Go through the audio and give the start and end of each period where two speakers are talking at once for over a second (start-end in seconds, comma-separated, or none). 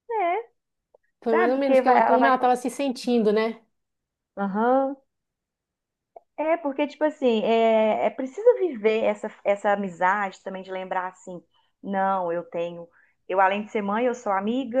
1.3-2.5